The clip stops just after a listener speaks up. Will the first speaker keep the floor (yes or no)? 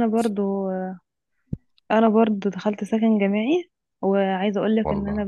yes